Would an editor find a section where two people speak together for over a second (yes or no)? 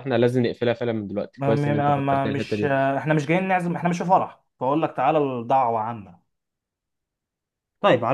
yes